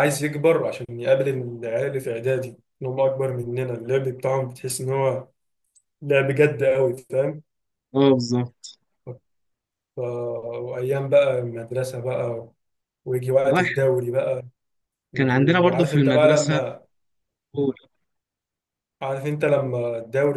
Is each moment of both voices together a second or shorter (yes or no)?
no